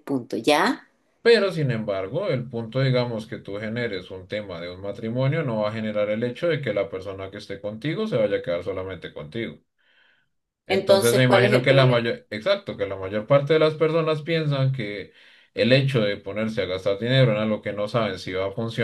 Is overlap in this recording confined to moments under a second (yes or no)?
no